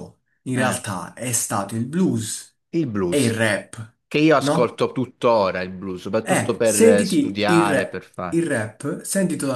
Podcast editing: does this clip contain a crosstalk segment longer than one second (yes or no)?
yes